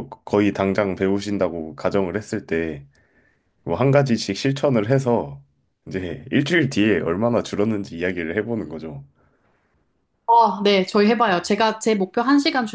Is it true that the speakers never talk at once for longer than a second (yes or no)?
yes